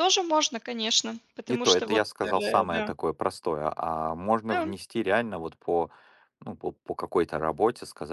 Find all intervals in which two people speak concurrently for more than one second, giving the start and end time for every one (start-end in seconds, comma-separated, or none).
1.5-2.9